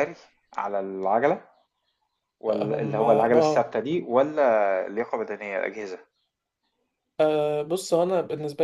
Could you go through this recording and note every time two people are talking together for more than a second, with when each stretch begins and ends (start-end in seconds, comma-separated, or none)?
2.5-3.7